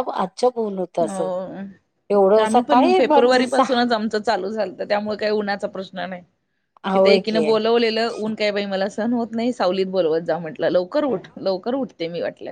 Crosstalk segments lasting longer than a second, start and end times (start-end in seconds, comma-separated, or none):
2.5-3.8